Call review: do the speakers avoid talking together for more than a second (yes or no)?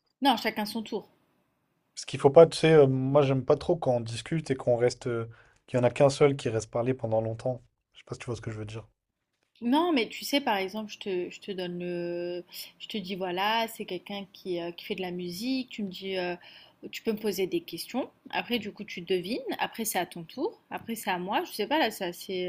yes